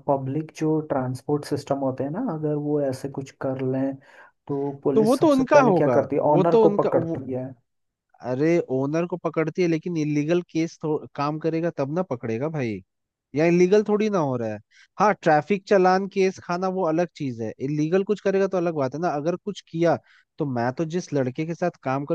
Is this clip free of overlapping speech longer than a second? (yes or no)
no